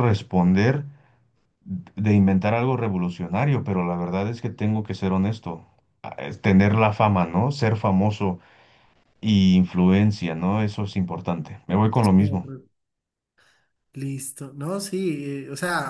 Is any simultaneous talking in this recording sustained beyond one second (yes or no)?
no